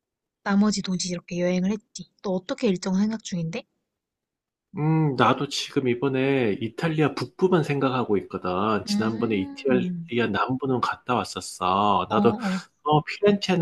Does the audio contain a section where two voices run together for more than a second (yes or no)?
yes